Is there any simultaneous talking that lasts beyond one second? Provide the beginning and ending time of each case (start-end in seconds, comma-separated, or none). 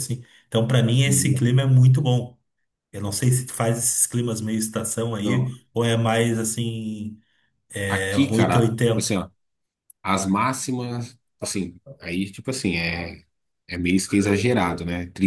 7.9-9.2